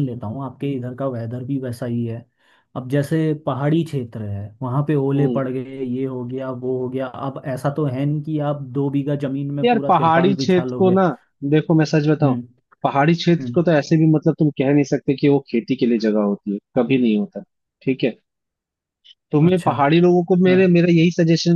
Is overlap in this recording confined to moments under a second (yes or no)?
no